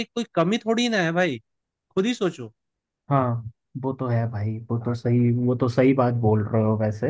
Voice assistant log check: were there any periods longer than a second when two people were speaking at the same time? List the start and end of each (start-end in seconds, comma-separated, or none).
none